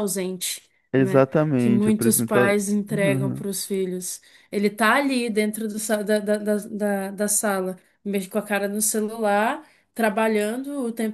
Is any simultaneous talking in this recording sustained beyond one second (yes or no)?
yes